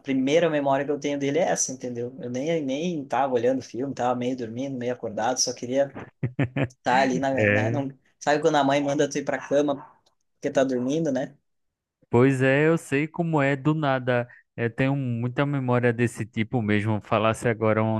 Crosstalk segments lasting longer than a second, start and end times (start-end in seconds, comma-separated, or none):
none